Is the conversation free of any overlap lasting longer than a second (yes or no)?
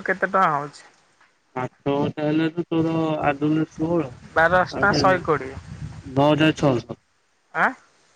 yes